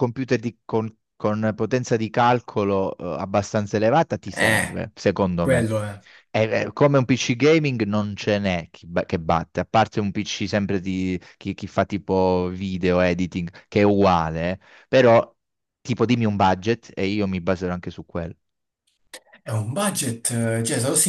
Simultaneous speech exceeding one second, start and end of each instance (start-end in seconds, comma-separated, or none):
none